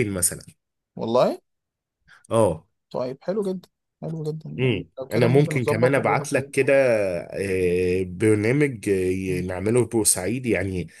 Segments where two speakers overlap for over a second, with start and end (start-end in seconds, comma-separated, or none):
4.6-6.5